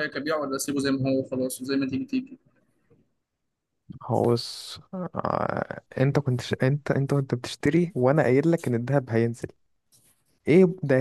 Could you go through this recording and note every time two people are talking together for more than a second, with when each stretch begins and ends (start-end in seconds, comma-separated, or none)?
none